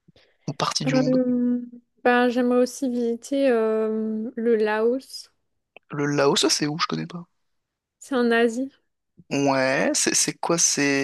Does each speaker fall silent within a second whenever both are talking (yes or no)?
yes